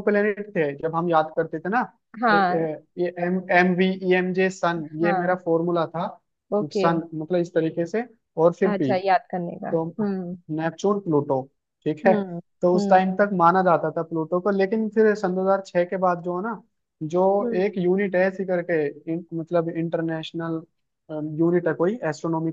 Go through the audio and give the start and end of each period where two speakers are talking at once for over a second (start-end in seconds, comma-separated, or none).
none